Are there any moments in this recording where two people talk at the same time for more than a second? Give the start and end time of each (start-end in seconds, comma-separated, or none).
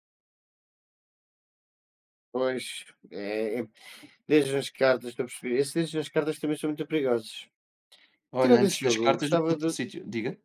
8.4-9.8